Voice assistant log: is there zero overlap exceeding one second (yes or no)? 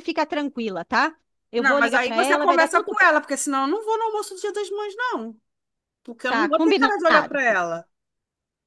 no